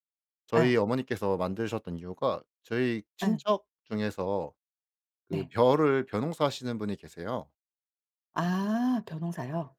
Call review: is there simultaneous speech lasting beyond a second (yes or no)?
no